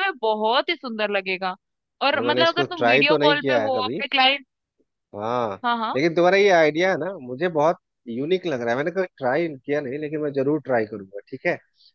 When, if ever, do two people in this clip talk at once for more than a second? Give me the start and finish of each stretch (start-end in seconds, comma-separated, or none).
2.1-4.0